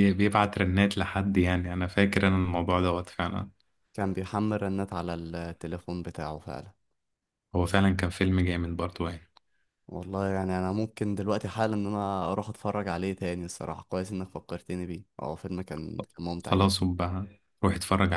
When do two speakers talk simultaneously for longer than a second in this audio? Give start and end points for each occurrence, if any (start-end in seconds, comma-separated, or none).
none